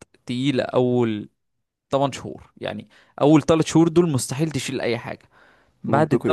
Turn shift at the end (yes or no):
no